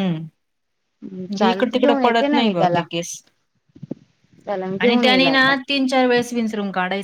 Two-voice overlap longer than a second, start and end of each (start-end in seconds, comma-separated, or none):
1.2-2.8